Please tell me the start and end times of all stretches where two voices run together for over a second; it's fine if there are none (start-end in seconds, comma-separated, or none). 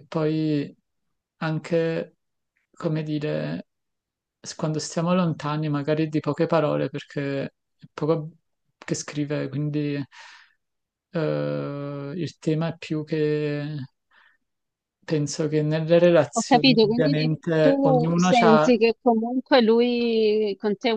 16.4-18.8